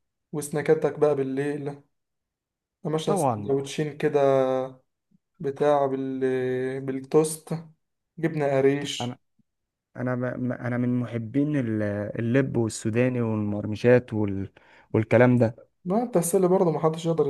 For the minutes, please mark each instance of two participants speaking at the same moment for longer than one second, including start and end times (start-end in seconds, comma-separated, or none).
none